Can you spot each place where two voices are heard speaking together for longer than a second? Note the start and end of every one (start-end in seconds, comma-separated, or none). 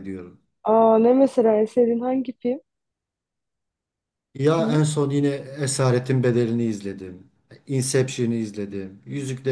none